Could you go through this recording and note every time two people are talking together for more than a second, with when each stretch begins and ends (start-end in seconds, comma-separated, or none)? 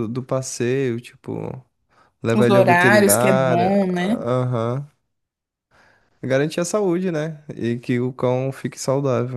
2.3-4.2